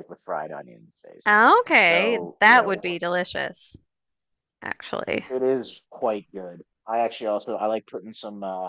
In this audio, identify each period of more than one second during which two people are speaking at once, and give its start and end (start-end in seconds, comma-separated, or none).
1.2-3.0